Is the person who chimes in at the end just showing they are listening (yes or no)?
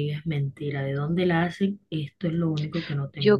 no